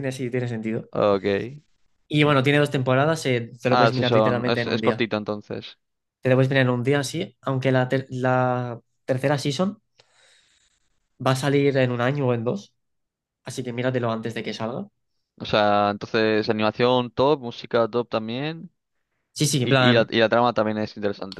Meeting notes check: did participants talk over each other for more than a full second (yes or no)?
yes